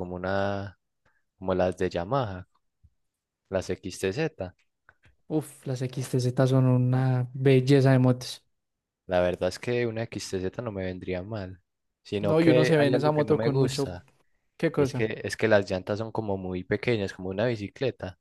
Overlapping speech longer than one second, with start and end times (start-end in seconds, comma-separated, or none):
12.2-13.9